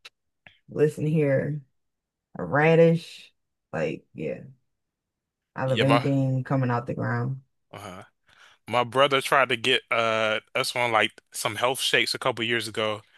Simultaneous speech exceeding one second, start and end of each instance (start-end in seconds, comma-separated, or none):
none